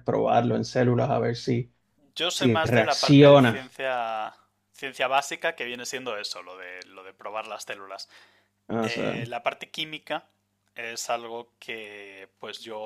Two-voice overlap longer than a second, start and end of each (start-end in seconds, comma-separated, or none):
2.3-3.6